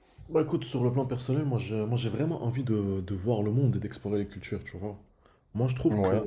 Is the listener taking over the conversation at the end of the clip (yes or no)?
no